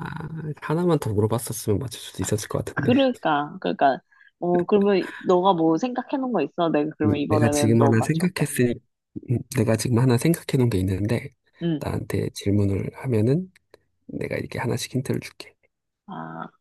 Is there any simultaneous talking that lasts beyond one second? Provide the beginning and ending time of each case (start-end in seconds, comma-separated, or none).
7.0-8.4